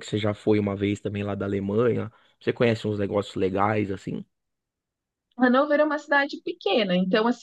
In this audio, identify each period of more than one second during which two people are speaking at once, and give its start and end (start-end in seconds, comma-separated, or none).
none